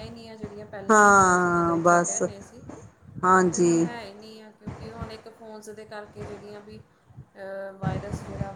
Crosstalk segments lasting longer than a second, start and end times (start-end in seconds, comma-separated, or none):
0.9-2.2